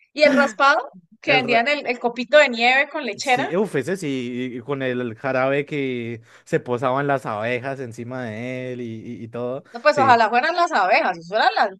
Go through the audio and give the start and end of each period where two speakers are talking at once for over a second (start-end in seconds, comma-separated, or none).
none